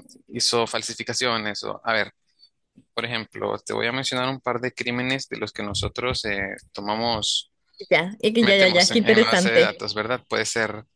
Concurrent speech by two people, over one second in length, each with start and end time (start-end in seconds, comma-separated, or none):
8.4-9.7